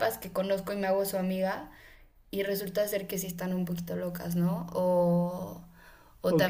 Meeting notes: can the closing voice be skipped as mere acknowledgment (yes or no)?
no